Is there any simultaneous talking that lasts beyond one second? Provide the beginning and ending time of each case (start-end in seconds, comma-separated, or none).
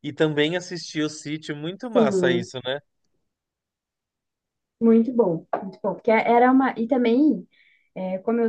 none